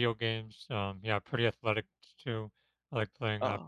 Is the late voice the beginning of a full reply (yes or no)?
no